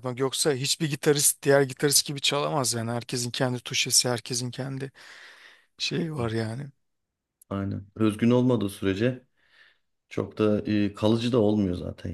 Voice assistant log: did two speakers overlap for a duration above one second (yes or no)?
no